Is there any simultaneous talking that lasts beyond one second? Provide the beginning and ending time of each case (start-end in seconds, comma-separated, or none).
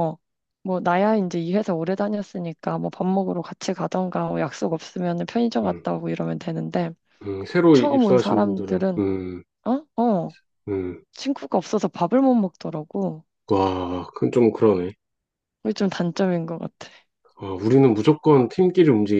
7.7-9.0